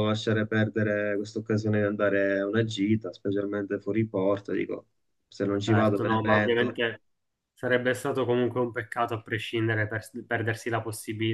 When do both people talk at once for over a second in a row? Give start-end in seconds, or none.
5.5-6.8